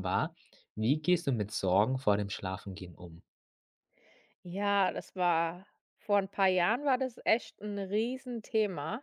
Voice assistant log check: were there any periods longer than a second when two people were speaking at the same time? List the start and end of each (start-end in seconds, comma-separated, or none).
none